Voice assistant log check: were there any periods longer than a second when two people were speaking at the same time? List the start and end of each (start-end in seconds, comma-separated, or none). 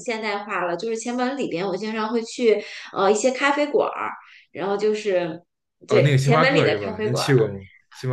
5.9-7.3